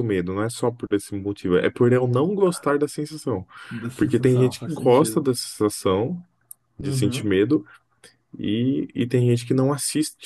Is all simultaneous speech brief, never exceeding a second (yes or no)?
no